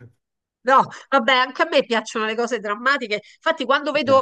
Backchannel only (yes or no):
yes